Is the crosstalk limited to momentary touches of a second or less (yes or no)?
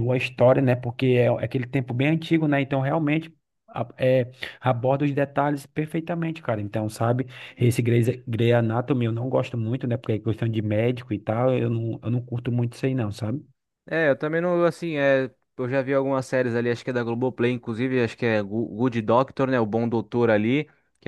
yes